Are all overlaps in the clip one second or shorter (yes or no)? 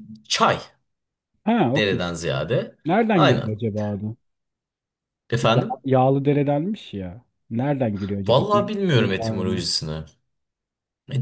no